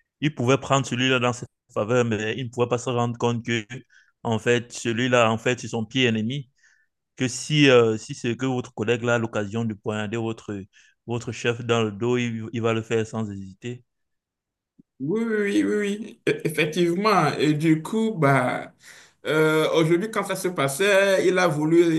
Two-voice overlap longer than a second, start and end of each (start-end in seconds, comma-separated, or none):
none